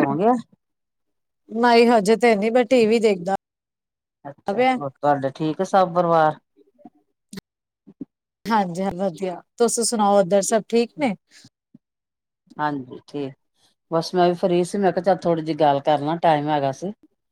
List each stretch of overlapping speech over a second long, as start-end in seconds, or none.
none